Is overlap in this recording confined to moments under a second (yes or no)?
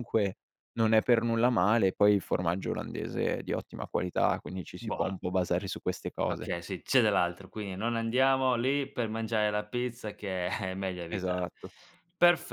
yes